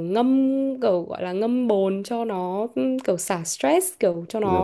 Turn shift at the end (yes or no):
no